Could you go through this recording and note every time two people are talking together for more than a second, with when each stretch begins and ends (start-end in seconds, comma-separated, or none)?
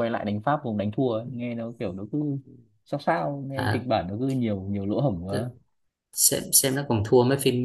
none